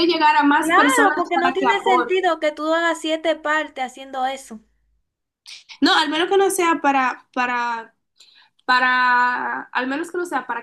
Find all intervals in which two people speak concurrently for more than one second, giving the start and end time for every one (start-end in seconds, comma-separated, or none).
0.6-2.3